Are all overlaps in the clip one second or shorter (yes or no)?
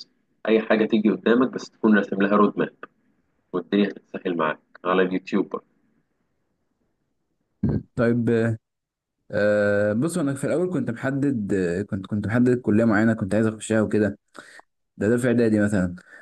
yes